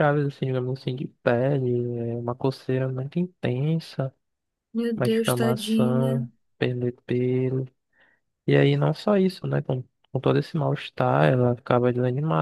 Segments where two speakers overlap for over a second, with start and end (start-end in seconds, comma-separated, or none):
5.0-6.3